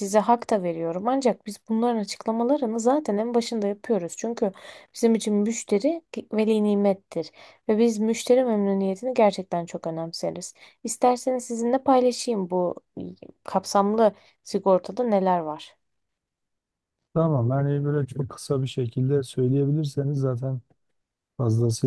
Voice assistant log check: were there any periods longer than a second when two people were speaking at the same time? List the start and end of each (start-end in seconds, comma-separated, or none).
none